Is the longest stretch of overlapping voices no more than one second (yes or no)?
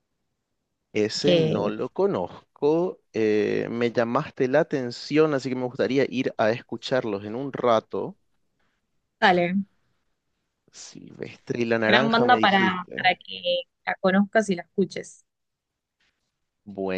no